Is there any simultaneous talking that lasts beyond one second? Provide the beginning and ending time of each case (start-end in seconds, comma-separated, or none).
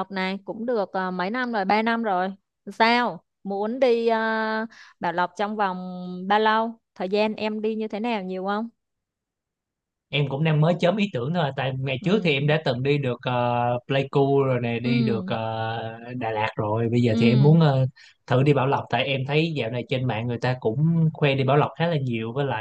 none